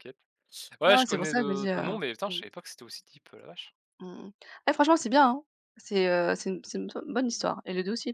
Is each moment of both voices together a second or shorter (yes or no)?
no